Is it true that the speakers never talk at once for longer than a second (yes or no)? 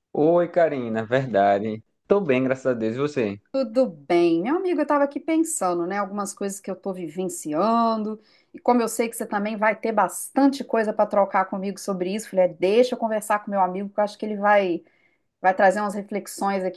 yes